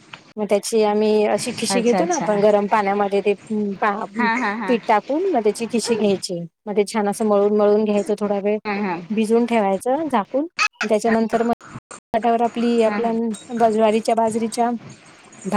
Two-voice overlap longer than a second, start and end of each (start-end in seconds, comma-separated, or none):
none